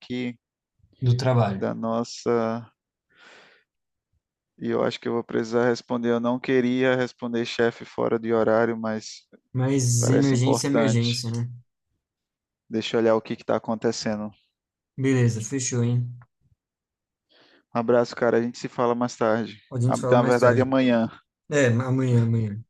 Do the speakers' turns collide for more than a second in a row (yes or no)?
yes